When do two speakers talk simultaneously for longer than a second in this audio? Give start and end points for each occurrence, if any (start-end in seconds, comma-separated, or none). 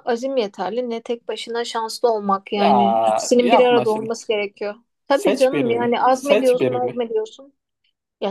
2.5-4.2, 5.1-7.1